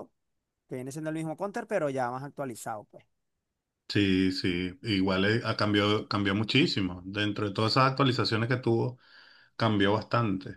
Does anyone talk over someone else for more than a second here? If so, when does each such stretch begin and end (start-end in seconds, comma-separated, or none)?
none